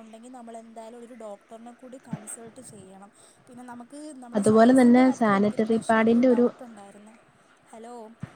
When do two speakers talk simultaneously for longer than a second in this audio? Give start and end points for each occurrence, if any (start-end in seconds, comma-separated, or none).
4.4-6.3